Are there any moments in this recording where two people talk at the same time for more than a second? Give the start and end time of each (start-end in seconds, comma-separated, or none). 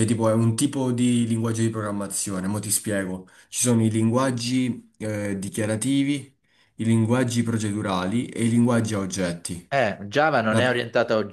none